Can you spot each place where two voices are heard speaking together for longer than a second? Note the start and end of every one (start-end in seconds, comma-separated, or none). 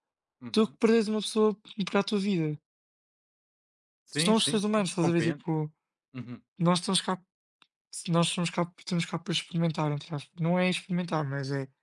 4.1-5.4